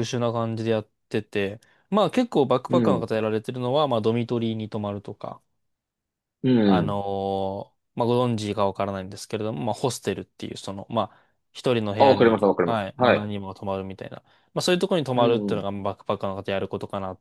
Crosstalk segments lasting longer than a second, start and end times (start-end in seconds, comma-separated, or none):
12.0-13.3